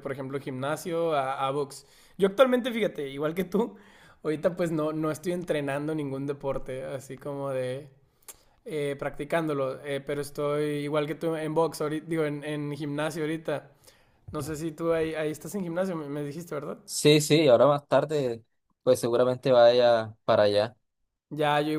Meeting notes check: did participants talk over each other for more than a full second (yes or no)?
no